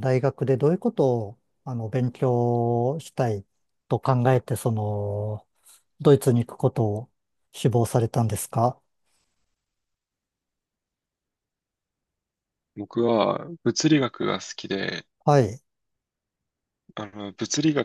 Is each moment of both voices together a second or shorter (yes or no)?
yes